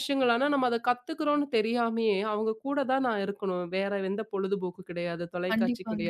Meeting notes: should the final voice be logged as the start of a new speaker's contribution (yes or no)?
no